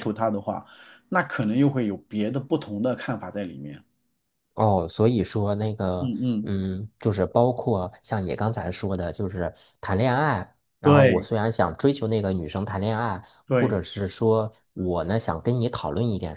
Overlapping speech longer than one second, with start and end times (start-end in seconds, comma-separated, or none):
none